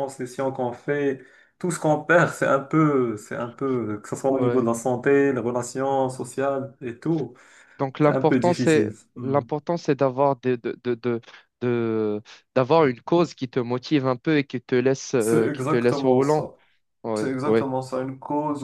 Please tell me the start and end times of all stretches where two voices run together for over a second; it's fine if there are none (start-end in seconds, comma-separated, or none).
8.0-9.4, 15.2-16.5